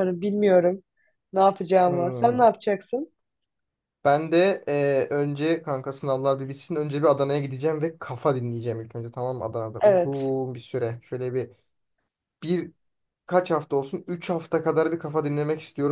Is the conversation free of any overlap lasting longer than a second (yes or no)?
yes